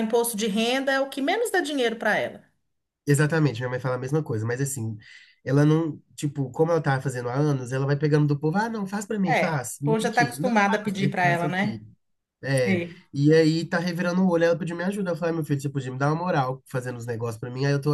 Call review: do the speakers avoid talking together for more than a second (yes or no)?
no